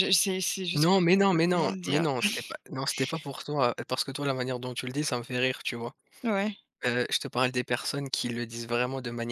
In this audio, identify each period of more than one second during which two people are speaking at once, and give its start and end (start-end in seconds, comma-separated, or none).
0.7-2.0